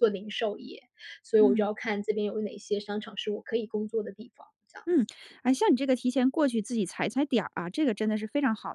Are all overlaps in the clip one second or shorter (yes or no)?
yes